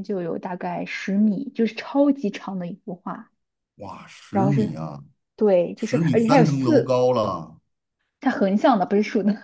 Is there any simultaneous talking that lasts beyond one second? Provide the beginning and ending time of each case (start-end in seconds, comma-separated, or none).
5.8-7.0